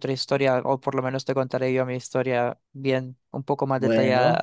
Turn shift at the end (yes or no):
no